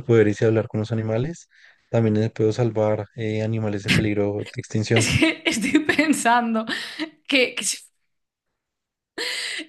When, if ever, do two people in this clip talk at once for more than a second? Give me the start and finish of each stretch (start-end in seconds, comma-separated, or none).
none